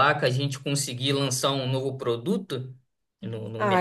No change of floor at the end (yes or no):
no